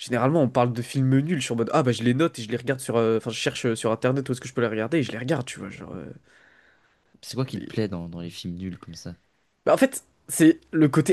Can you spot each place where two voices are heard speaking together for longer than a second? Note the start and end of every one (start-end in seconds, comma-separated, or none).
none